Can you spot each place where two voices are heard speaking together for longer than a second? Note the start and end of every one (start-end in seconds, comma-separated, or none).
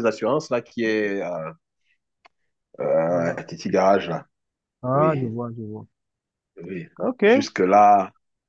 none